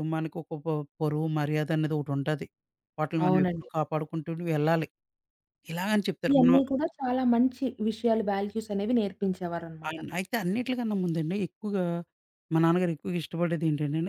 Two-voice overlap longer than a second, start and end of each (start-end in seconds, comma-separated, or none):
none